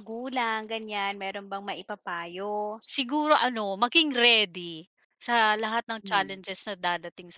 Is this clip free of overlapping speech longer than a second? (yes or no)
yes